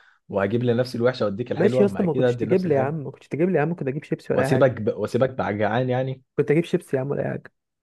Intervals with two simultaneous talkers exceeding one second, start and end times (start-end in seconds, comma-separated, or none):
1.6-3.1